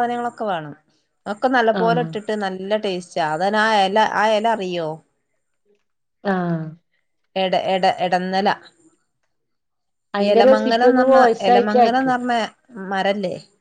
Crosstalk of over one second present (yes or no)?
yes